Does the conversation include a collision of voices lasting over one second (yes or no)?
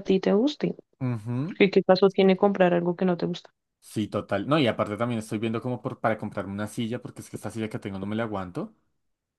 no